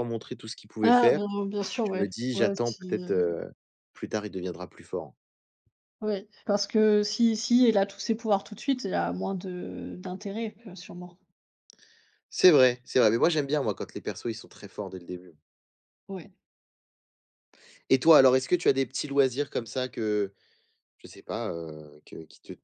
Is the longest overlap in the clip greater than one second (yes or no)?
yes